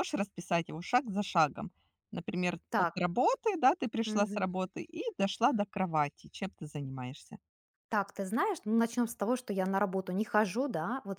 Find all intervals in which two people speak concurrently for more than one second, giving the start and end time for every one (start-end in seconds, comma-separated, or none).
none